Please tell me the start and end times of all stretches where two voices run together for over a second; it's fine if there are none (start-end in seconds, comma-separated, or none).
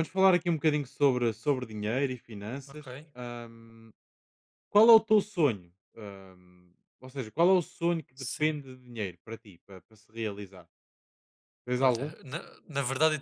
none